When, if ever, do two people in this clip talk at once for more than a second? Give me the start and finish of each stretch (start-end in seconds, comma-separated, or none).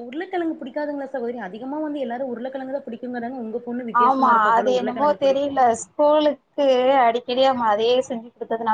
none